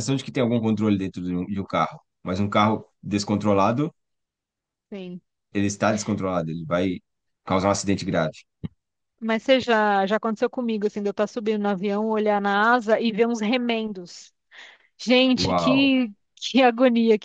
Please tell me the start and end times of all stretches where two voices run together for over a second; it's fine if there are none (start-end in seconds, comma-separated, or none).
none